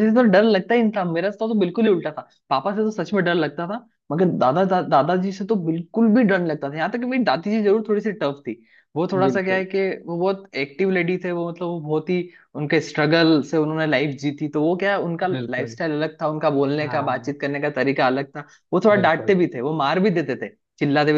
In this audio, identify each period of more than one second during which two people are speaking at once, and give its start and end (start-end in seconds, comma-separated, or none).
none